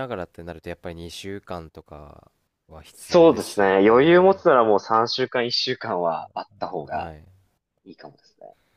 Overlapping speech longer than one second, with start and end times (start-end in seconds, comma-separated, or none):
2.9-4.4